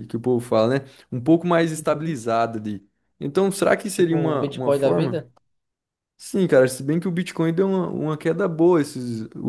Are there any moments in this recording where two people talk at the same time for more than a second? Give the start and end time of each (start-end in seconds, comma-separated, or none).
3.9-5.3